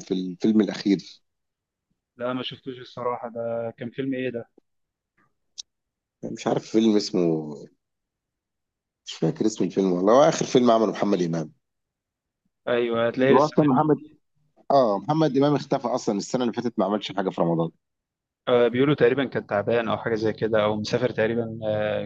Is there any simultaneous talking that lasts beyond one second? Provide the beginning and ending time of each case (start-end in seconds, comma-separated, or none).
none